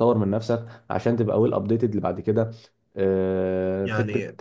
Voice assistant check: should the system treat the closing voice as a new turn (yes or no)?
no